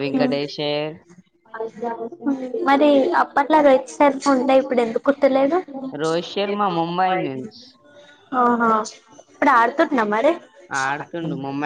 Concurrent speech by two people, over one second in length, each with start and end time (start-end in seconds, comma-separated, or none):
none